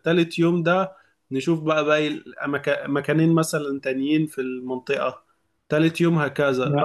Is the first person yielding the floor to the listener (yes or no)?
no